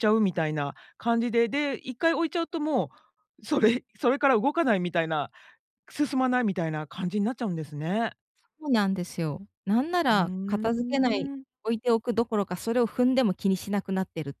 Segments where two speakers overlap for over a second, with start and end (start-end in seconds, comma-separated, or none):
10.1-11.4